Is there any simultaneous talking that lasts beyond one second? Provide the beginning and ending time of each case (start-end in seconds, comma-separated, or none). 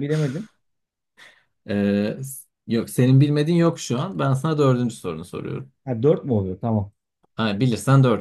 none